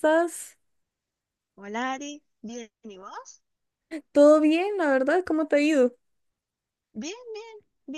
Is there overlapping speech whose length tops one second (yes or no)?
no